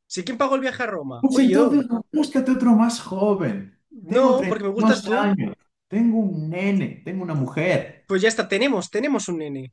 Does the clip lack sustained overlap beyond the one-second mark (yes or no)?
no